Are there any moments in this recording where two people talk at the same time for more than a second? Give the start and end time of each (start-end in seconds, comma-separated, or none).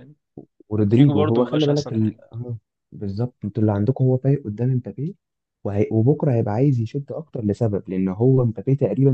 0.7-2.2